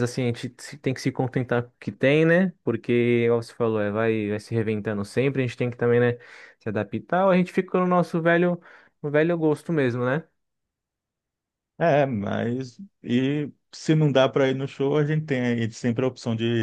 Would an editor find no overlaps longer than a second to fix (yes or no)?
yes